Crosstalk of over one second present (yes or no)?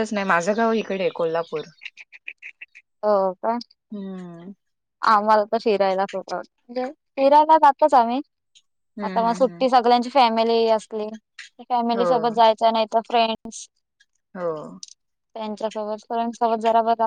no